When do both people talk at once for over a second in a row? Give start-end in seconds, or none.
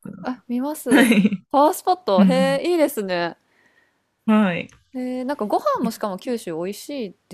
none